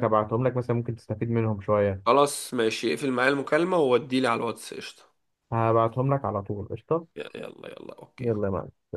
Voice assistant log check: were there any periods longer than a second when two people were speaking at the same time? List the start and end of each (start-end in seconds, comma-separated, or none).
none